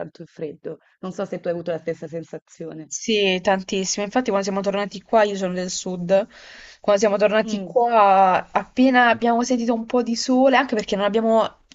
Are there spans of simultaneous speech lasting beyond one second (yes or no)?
no